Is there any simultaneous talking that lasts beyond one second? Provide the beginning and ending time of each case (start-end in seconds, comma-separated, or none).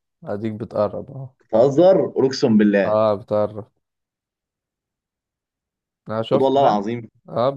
none